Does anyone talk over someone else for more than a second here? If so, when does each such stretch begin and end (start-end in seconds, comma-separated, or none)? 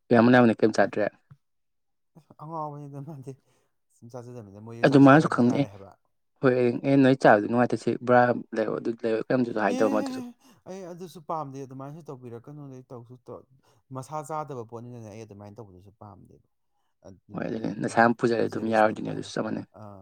17.3-19.3